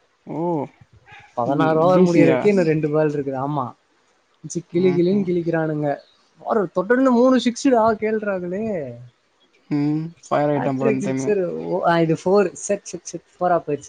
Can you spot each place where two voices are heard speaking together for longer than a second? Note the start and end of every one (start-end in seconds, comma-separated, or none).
none